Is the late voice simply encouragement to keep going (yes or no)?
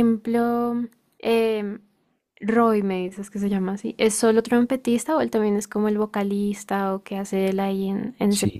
no